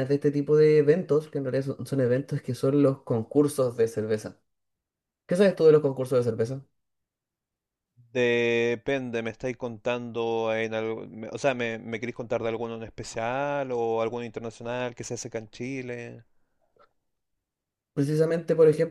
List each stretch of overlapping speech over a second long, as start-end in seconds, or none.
none